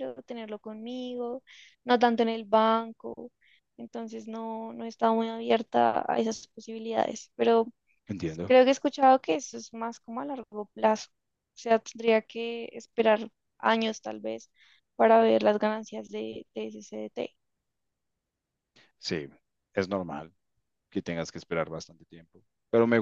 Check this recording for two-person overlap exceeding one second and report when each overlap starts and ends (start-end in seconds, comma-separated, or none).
none